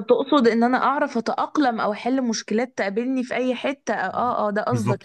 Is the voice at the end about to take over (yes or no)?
yes